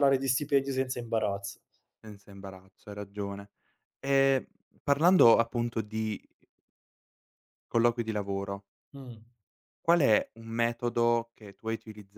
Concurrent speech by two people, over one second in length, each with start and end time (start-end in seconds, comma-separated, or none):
none